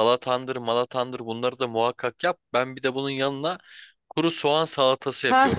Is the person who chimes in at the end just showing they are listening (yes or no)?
no